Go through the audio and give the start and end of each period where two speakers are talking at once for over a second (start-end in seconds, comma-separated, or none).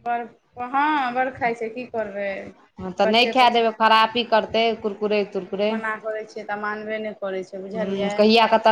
none